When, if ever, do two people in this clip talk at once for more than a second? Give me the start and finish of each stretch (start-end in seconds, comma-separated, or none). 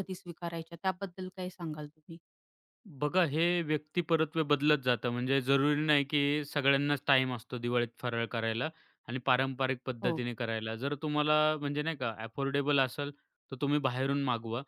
none